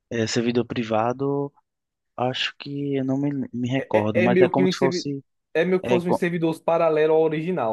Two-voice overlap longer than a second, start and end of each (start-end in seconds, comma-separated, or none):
3.8-5.1